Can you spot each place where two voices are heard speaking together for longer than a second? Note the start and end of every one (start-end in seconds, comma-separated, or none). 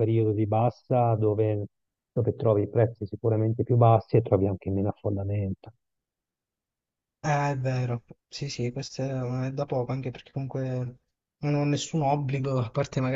none